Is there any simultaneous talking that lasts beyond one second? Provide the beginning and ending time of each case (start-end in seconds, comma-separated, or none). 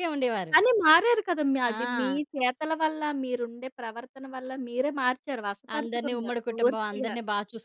5.8-7.2